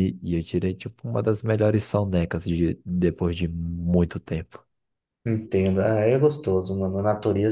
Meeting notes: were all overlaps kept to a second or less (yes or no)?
yes